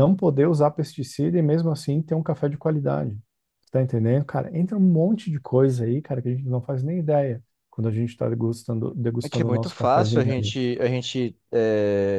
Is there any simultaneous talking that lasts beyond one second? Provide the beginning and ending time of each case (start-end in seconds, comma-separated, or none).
9.2-10.5